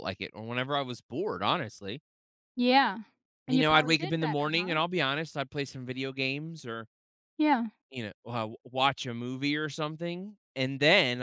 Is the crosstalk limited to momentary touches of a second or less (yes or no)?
no